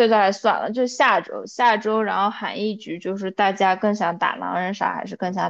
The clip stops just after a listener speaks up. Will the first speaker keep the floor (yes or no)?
no